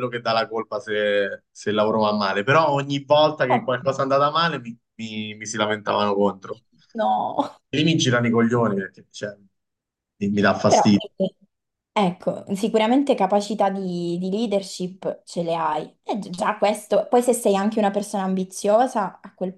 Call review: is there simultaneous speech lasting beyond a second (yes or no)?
no